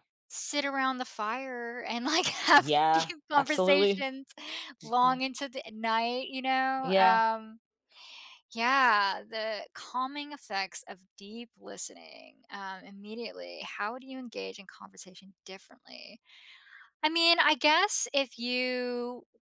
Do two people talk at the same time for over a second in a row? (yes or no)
yes